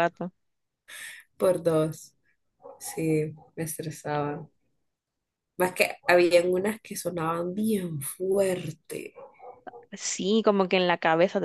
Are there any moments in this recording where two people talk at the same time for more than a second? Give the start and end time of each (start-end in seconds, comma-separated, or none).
none